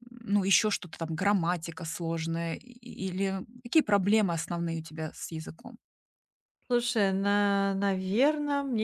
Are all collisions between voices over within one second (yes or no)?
yes